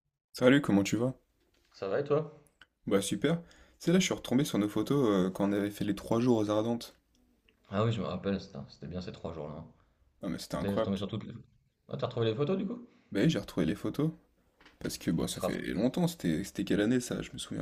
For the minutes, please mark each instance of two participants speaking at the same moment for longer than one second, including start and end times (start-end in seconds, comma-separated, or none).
none